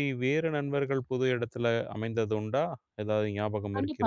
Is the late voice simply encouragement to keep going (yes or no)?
no